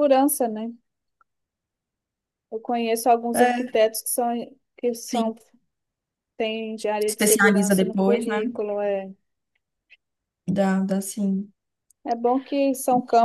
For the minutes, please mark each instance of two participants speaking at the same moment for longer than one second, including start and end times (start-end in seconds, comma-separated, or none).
7.1-8.4